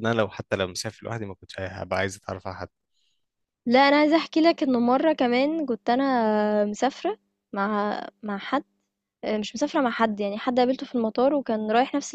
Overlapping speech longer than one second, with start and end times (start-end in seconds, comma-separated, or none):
none